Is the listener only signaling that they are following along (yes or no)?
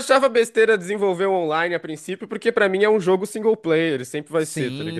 no